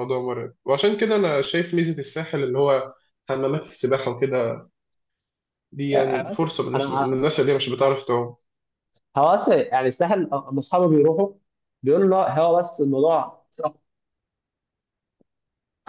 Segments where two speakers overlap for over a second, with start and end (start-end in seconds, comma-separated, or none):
5.9-7.4